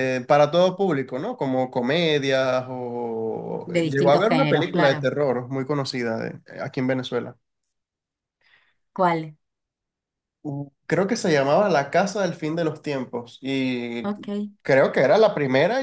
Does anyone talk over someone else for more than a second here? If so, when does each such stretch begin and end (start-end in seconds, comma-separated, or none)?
3.6-5.1